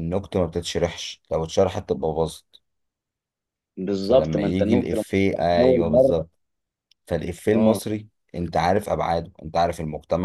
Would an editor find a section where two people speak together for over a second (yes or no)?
yes